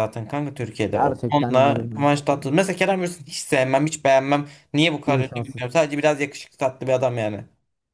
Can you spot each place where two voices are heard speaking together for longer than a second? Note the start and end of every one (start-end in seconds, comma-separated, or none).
0.9-2.5